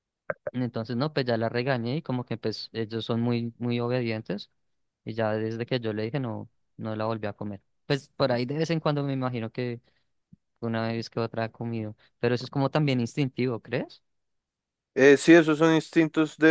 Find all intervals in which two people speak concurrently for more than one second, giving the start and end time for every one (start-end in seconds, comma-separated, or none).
none